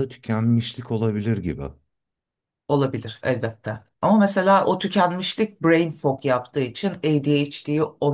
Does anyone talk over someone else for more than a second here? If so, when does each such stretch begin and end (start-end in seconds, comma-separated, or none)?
none